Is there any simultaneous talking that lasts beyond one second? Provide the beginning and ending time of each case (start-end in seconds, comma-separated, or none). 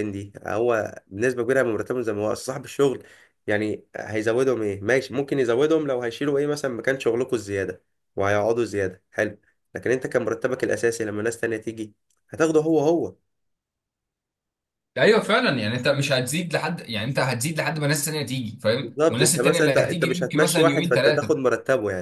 18.8-21.4